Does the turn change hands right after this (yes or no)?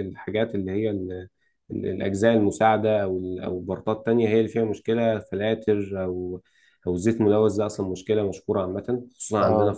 no